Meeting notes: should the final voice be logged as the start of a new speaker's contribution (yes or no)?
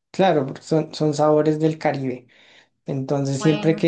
no